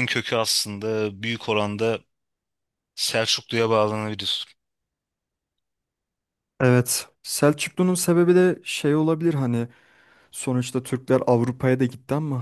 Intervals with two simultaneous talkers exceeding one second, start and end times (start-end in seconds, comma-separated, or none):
none